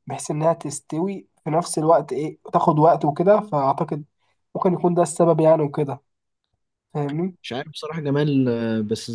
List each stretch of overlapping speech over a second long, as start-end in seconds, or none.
none